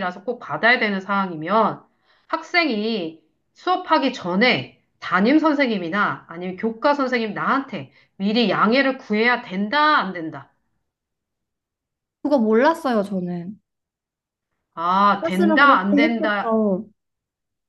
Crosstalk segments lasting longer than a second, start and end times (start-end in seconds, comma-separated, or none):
15.2-16.6